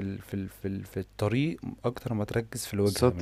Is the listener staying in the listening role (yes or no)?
no